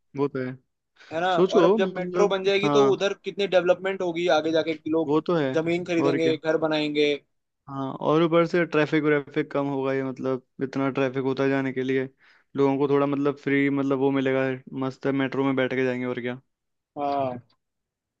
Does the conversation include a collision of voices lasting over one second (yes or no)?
yes